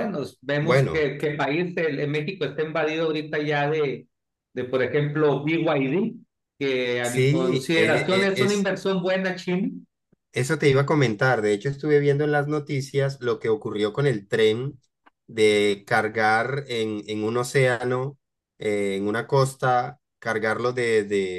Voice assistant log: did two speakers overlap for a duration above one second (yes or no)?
yes